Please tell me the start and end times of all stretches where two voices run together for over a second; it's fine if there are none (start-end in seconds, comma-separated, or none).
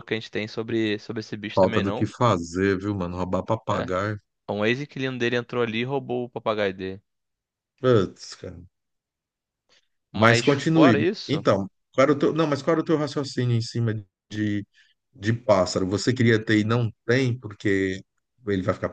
10.1-11.5